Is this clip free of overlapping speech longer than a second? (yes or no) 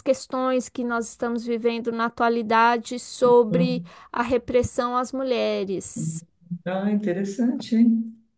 yes